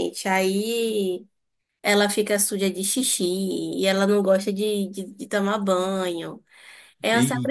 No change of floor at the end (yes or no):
yes